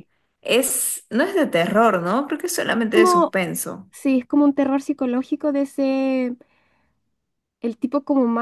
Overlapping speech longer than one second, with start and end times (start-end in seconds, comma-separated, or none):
none